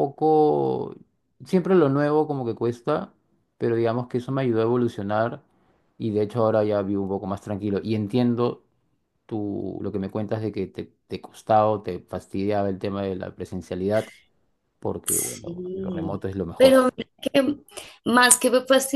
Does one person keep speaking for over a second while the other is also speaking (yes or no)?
yes